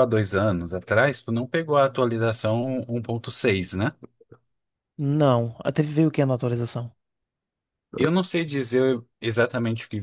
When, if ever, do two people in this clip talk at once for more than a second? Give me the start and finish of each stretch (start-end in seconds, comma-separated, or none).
none